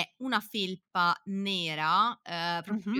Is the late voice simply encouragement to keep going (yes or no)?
yes